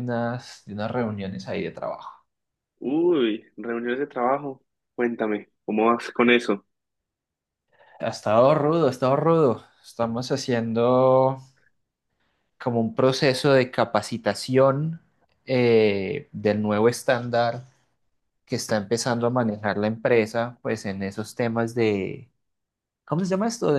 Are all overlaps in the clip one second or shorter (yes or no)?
yes